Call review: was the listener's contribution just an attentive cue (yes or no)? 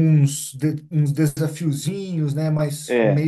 no